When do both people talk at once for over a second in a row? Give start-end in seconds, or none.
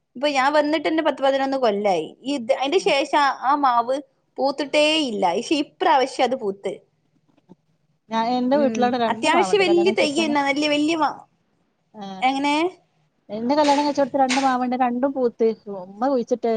8.6-10.3